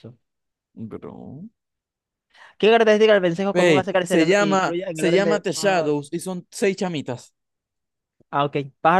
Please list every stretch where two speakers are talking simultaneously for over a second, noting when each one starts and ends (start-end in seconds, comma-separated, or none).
3.5-6.0